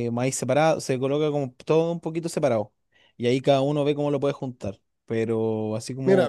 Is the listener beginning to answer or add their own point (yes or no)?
yes